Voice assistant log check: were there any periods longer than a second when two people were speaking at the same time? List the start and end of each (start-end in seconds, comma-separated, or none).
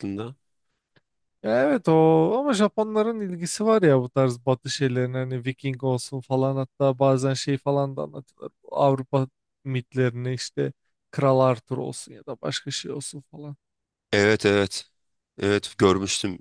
none